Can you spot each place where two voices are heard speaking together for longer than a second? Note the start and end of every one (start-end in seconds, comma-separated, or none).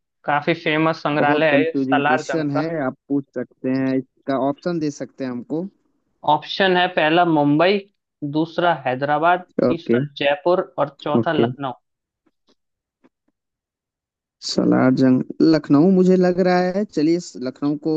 1.2-2.7